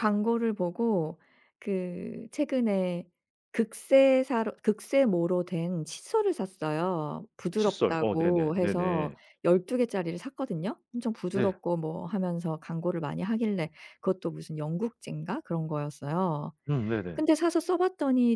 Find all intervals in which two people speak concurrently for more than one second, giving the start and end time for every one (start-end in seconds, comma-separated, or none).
7.6-9.2